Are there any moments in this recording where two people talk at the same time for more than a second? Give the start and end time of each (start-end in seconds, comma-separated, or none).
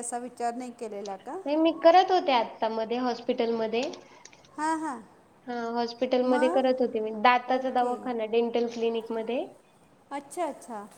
6.3-8.0